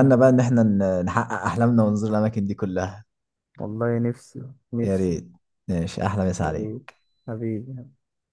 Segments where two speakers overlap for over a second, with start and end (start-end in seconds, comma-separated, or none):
none